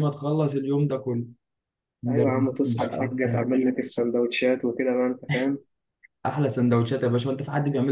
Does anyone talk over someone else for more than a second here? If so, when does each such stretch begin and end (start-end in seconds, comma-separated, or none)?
2.1-3.4